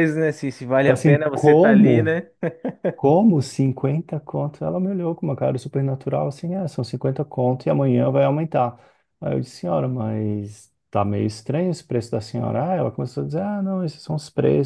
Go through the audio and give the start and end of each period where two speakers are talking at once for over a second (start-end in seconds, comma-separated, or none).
0.8-2.1